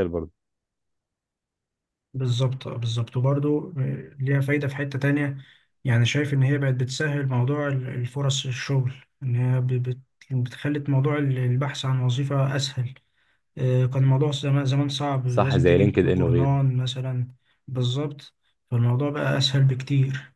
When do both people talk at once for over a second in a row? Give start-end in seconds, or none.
15.2-16.6